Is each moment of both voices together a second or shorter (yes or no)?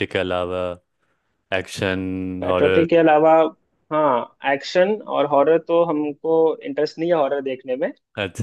yes